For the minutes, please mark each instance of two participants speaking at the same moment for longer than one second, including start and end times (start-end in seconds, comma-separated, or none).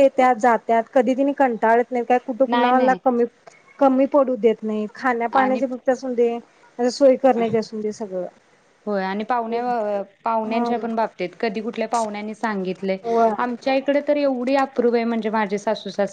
none